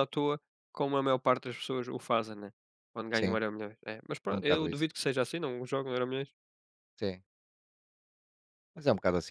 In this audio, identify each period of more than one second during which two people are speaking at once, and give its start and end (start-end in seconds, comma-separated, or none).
none